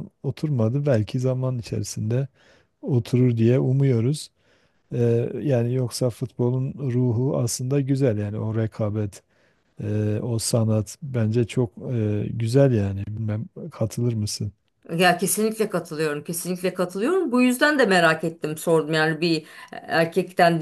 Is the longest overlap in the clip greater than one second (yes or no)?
no